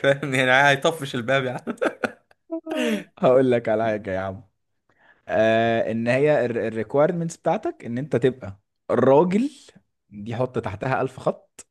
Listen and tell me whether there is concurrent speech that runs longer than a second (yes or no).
no